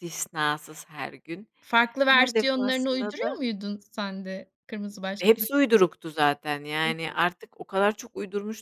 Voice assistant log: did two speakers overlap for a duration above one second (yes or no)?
yes